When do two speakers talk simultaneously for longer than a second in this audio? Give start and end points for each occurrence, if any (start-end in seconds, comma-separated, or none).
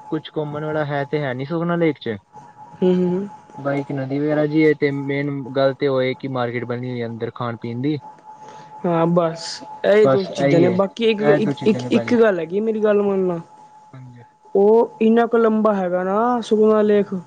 10.1-12.2